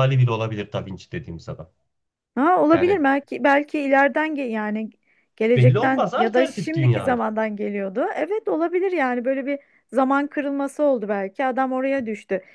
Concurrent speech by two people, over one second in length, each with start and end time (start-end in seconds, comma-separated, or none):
5.5-7.2